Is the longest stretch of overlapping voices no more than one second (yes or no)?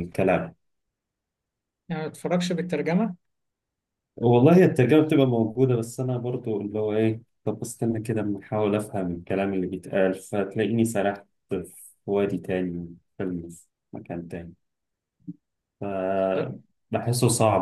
yes